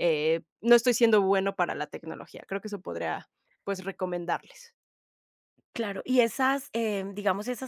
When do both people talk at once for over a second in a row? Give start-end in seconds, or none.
none